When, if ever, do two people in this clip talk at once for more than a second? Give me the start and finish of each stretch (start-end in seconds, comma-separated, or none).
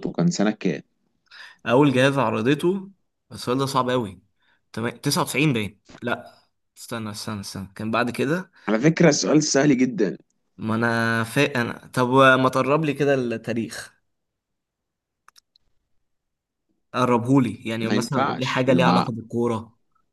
17.8-19.1